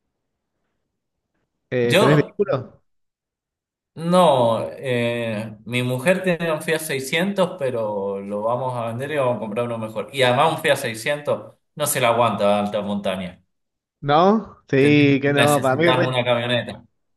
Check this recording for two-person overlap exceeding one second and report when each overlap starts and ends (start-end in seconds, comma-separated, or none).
14.8-16.1